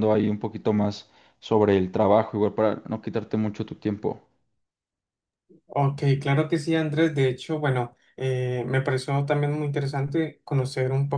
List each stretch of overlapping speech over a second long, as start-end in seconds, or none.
none